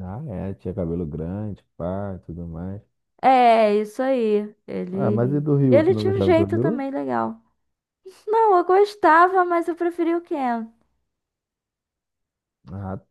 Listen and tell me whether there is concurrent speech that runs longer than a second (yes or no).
yes